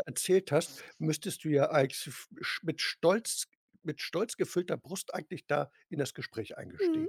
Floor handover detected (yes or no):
yes